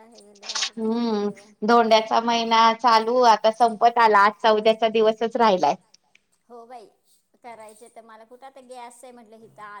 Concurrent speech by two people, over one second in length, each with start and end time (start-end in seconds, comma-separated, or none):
none